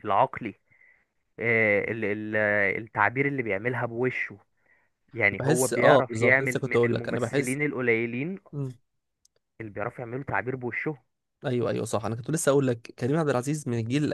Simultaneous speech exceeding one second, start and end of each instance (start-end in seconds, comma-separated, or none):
5.4-7.6